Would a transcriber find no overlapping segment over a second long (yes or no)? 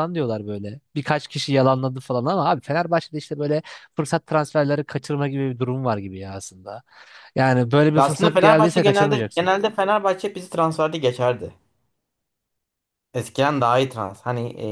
no